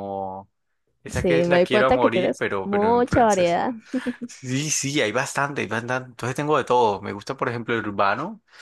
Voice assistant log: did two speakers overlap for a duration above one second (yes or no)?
yes